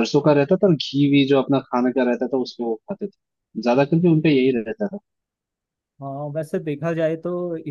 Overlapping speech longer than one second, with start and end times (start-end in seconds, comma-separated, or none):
none